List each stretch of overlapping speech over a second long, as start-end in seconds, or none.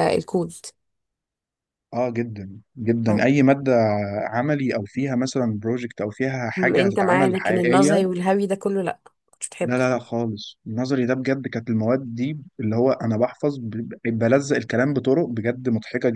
6.6-8.0